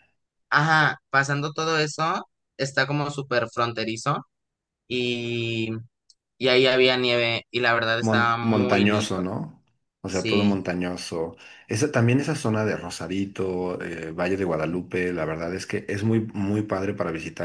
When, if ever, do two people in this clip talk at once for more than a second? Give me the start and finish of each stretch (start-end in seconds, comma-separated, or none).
8.0-9.2